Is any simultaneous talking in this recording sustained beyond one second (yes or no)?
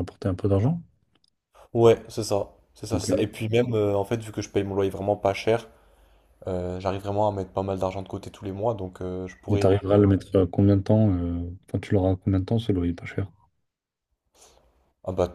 no